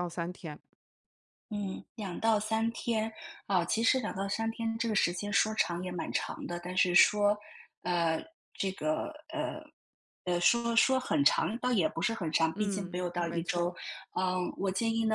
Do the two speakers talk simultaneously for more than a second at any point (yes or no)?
yes